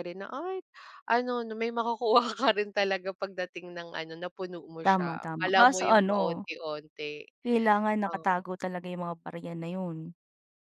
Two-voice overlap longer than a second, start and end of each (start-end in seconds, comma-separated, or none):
4.8-6.4